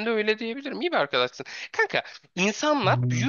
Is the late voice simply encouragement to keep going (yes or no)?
yes